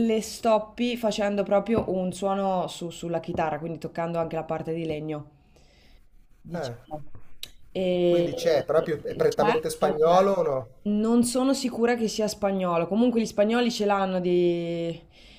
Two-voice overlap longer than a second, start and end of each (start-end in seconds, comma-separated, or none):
8.1-10.2